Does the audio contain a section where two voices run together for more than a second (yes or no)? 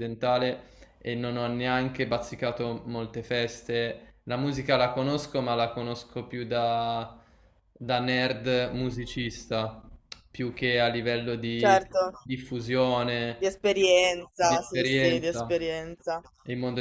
yes